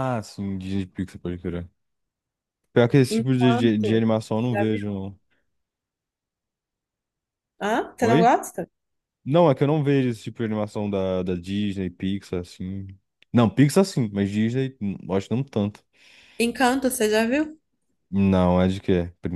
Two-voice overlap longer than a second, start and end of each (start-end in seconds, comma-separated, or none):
3.1-4.9